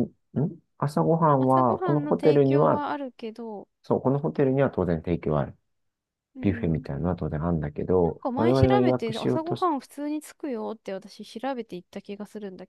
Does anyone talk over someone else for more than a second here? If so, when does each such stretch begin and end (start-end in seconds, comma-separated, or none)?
1.4-2.8, 8.0-9.7